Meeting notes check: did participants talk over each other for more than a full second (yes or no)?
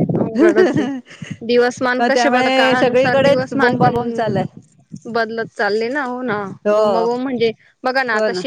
yes